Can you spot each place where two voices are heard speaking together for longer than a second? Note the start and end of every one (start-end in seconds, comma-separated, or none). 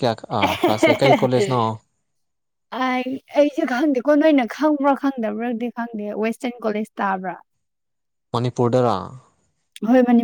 none